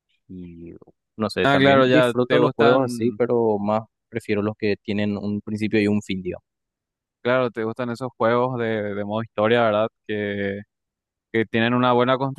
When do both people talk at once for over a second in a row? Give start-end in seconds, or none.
1.4-3.2